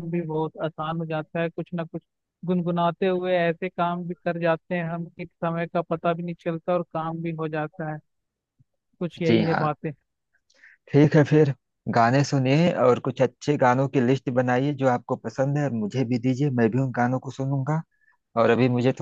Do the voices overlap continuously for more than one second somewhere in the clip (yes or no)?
no